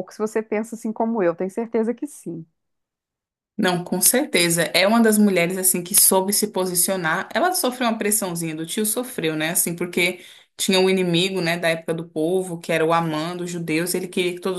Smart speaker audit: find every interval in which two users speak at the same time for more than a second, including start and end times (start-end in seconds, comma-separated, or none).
none